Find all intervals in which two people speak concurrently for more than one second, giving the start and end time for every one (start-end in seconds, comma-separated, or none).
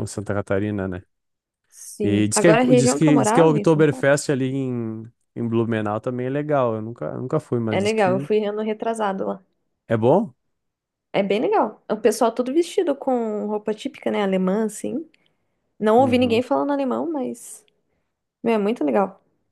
2.0-4.1